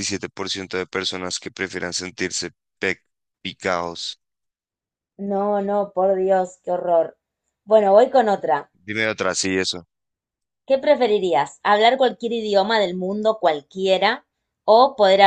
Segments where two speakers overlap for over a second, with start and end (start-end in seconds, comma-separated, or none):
none